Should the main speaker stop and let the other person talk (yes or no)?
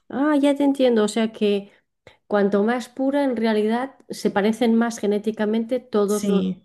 no